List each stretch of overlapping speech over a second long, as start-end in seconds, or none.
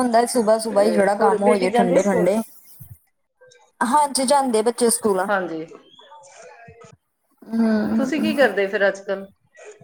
0.7-2.3